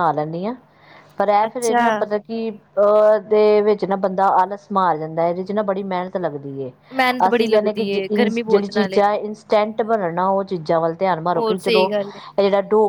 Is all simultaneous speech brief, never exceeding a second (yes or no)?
no